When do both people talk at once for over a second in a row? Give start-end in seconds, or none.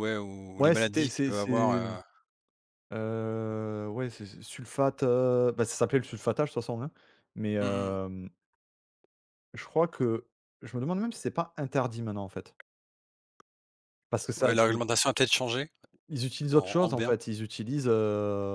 0.6-1.9